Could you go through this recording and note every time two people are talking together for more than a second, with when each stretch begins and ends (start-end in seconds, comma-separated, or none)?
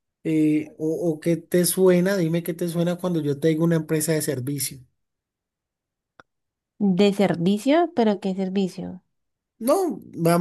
none